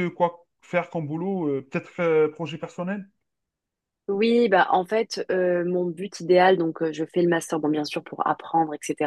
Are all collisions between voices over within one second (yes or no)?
yes